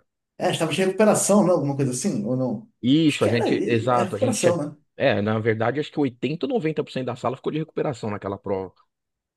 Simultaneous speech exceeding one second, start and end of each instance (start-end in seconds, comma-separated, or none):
3.1-4.6